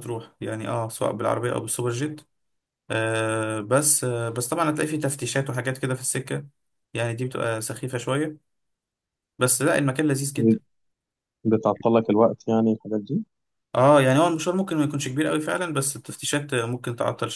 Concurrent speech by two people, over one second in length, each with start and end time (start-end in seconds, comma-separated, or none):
none